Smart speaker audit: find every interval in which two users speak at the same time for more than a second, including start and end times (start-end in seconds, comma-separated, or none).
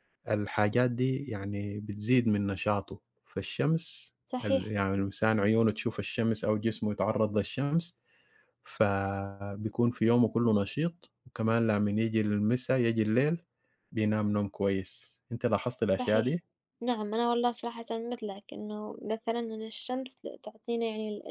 none